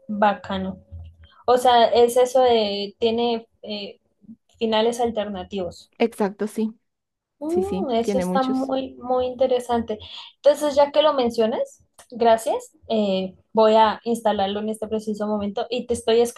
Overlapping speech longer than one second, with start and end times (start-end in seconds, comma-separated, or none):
7.5-8.7